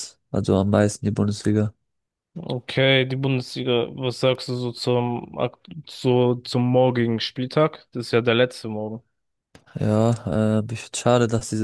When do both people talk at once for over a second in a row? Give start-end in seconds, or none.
none